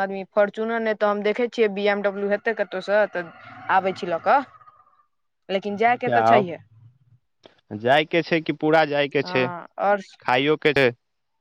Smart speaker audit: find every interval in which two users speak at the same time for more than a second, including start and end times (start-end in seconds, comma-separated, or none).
none